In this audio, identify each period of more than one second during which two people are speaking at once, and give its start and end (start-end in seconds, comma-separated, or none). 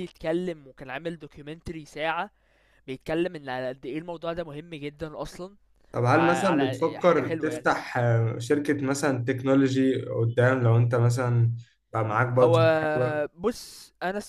6.1-7.7